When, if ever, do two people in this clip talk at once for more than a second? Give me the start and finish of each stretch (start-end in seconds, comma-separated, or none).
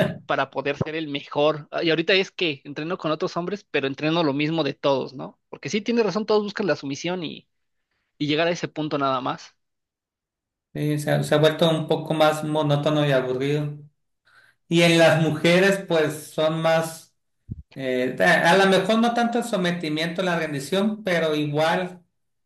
none